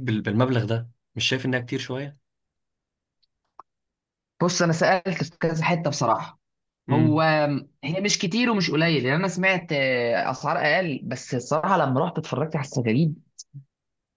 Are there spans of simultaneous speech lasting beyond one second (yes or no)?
no